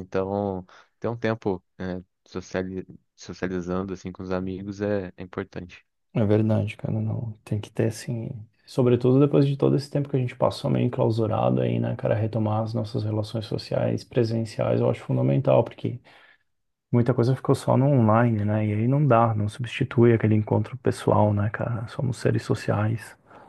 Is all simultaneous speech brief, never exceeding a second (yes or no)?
yes